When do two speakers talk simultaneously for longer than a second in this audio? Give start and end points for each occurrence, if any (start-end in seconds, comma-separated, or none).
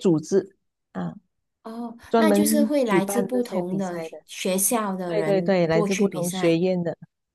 2.1-4.2, 5.0-6.6